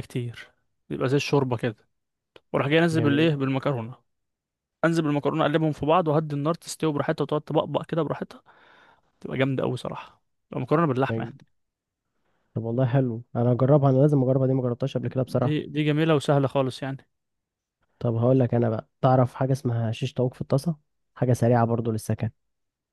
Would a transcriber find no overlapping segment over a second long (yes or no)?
yes